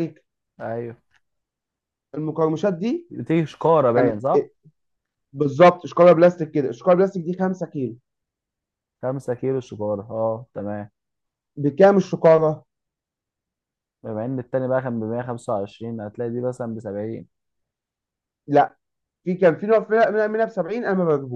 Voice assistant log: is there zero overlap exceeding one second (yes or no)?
yes